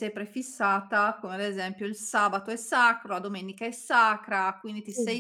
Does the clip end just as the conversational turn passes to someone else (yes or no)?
no